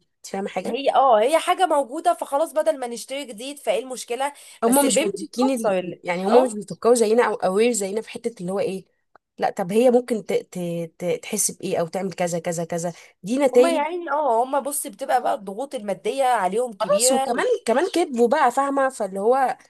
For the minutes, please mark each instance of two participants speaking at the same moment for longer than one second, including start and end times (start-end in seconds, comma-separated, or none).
4.6-6.6